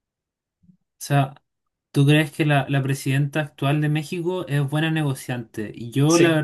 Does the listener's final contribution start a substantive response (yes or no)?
no